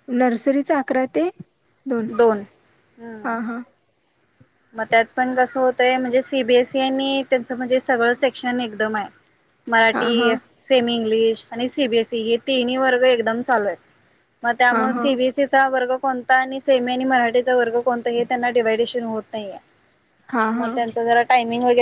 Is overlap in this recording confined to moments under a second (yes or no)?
yes